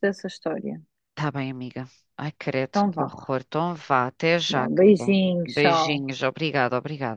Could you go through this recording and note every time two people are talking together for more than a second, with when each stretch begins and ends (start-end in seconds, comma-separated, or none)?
4.5-6.0